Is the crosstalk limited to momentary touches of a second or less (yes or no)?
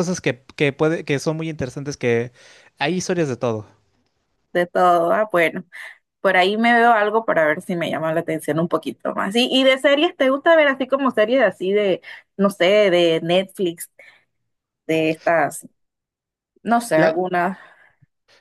yes